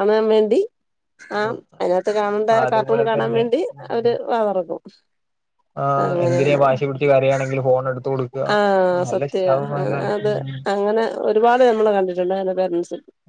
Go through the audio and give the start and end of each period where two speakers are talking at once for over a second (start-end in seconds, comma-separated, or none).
1.4-4.1